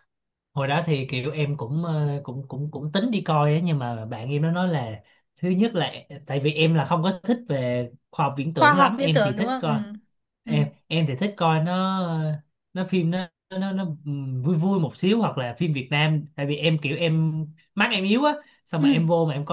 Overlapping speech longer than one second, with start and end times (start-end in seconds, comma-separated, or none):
8.5-9.7